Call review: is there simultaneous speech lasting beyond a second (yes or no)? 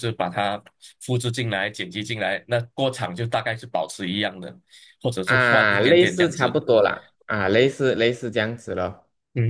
yes